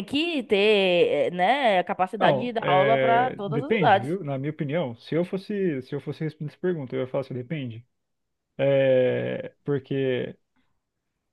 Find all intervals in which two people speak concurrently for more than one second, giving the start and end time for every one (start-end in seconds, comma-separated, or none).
2.2-4.2